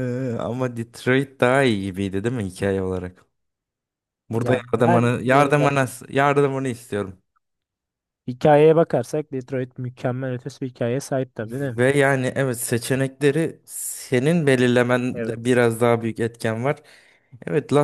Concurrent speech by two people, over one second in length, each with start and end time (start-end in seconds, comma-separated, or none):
4.3-6.0